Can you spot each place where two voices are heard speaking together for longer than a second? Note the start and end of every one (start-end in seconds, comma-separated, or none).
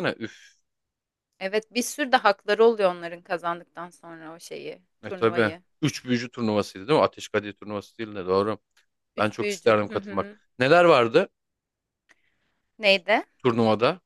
9.2-10.4